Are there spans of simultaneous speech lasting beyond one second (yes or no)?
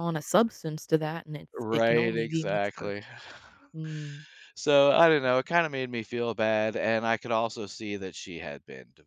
yes